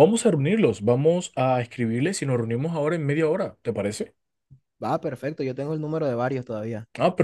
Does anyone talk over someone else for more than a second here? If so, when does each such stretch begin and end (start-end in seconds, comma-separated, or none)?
none